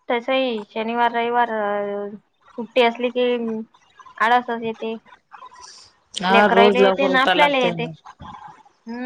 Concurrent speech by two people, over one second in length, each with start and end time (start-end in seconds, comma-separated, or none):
6.3-7.9